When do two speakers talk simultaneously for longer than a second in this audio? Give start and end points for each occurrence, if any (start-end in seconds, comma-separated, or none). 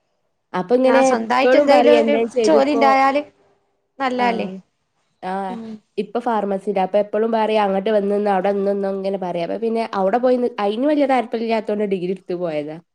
0.9-2.9